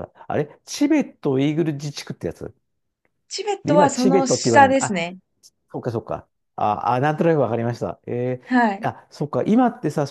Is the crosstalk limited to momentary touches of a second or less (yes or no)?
no